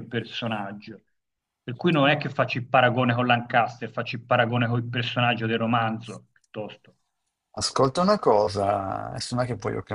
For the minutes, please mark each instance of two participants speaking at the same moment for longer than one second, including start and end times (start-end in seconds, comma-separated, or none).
none